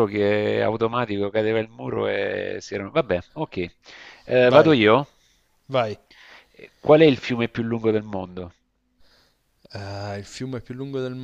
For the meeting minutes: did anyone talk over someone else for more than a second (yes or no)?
no